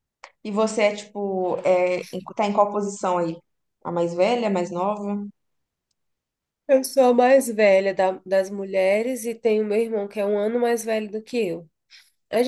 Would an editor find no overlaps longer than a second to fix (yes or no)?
yes